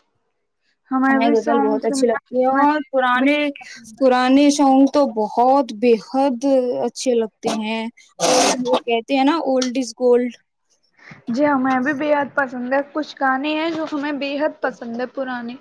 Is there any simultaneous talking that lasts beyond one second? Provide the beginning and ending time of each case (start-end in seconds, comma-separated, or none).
1.2-3.4